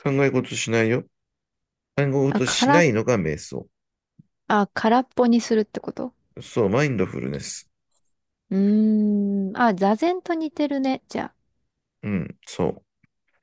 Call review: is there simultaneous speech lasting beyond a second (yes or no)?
no